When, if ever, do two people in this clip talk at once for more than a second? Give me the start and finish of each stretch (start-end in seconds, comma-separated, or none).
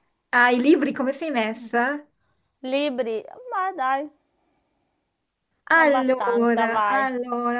5.8-7.1